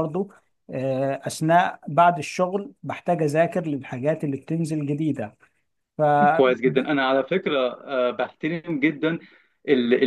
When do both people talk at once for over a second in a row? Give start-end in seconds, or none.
none